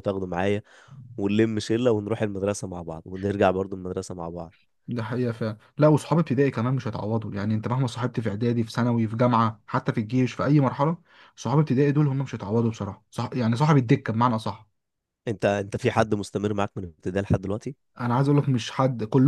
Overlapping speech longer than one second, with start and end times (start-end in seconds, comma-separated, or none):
none